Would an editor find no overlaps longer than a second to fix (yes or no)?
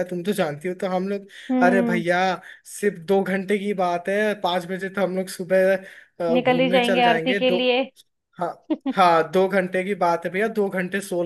no